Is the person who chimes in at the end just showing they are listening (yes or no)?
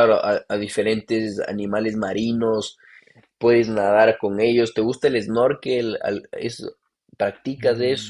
no